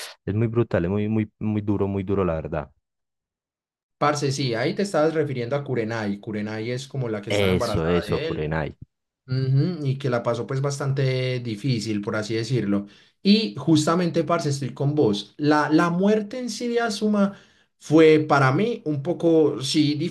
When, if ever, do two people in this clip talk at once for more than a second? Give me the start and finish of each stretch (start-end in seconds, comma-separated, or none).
7.3-8.5